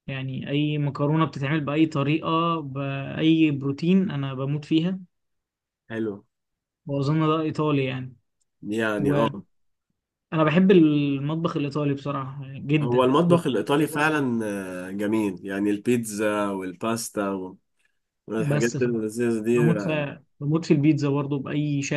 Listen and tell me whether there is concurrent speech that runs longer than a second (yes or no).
yes